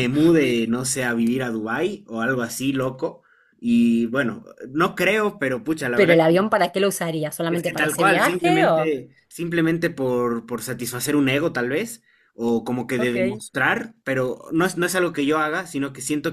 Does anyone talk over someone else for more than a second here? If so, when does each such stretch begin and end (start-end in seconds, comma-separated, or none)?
7.5-8.9